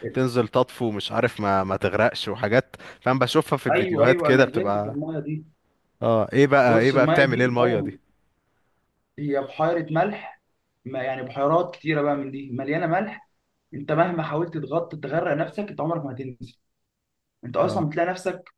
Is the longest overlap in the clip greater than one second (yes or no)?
yes